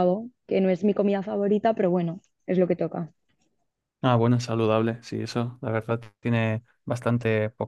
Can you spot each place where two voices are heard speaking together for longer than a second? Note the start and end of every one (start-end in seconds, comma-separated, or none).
none